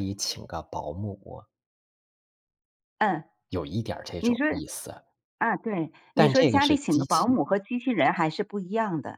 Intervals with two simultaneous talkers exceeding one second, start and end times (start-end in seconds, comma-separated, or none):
6.2-7.4